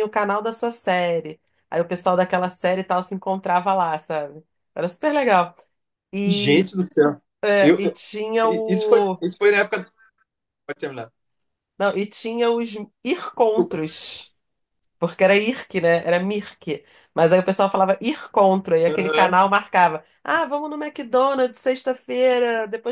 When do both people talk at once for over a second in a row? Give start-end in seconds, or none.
none